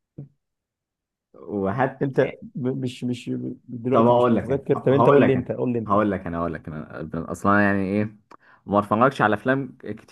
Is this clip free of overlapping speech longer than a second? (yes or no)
no